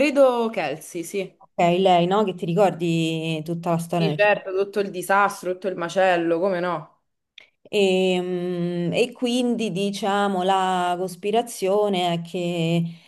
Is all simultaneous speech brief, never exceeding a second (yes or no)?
yes